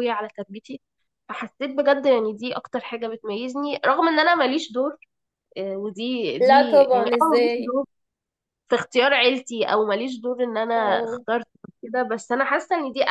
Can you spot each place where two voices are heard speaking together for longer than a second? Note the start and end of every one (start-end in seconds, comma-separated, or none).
6.4-7.8